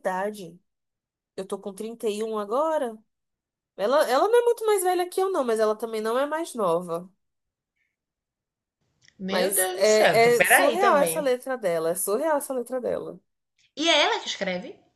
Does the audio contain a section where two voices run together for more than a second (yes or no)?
yes